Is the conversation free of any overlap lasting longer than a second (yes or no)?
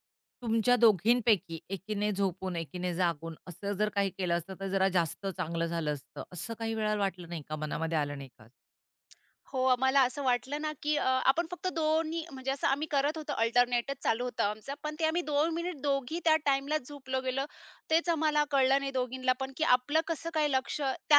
yes